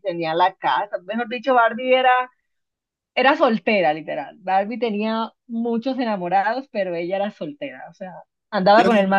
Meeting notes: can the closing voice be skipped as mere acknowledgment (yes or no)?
yes